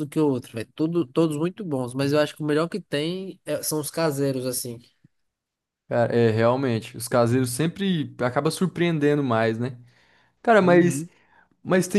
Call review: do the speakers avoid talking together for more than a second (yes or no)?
yes